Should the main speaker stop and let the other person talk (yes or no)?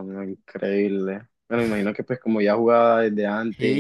yes